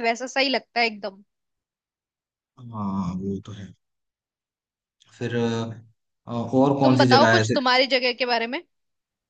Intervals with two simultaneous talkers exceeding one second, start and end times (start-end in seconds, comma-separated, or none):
none